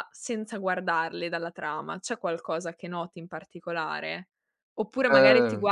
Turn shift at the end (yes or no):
no